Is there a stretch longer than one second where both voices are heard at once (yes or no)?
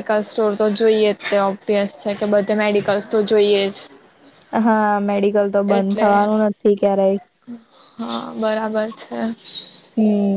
no